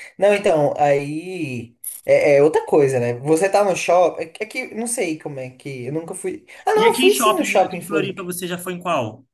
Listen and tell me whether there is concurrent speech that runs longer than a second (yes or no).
yes